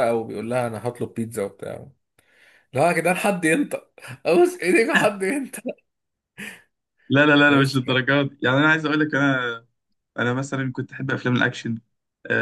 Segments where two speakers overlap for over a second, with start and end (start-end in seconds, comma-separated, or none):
none